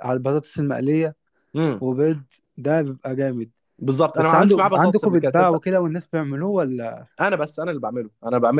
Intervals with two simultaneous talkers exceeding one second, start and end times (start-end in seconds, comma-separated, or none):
4.2-5.6